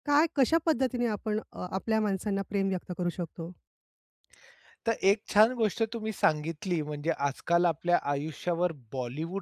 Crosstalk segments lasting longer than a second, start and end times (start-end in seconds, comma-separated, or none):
none